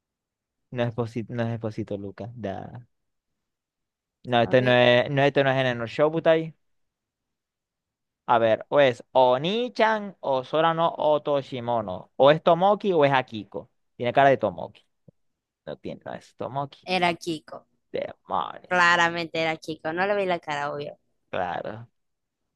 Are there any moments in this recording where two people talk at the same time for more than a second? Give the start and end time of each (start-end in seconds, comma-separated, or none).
none